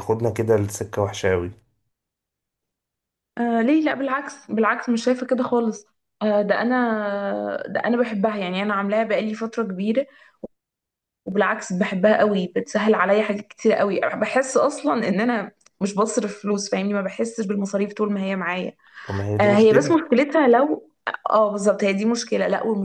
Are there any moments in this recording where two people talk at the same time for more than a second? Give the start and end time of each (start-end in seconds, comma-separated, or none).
none